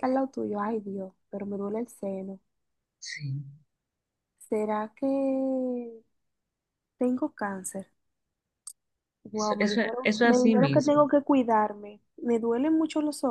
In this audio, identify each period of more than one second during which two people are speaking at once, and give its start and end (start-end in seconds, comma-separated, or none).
9.3-11.0